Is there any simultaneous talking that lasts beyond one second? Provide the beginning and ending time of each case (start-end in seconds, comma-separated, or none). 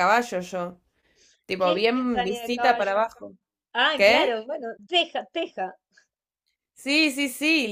1.6-3.0